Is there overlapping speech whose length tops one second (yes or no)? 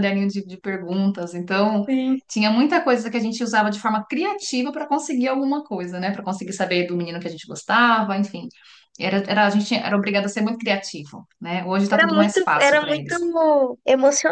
yes